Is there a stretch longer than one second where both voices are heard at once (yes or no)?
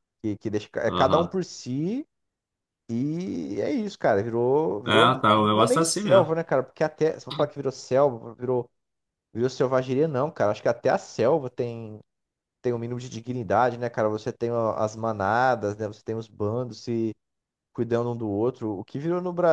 yes